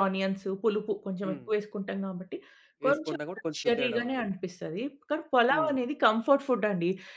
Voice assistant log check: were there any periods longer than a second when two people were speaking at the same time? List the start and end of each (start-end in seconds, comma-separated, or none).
2.9-4.4